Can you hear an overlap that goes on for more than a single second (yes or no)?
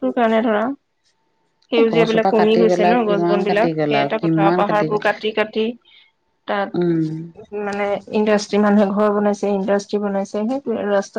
yes